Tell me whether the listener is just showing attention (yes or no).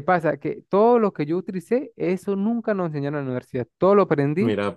yes